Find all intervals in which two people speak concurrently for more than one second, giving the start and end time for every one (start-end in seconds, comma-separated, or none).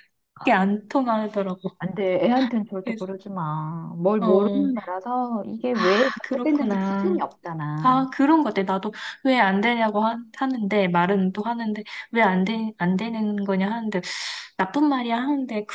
5.7-7.2